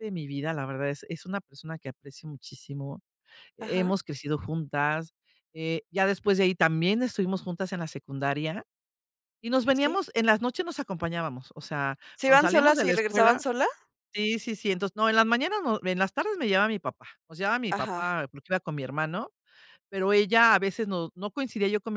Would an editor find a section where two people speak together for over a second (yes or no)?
yes